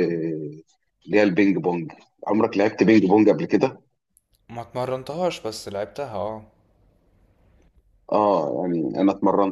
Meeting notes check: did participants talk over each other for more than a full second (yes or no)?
no